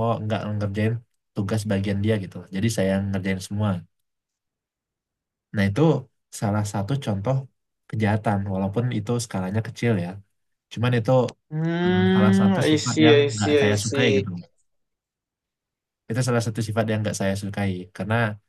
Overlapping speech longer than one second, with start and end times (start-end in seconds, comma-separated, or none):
11.8-14.3